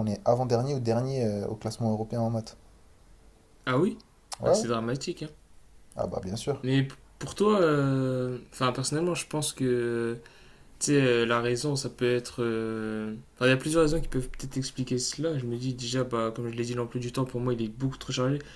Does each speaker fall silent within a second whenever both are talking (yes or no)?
yes